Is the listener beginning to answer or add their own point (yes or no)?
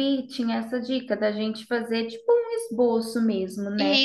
no